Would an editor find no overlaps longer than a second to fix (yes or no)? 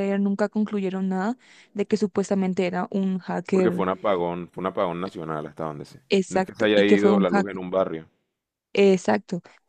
no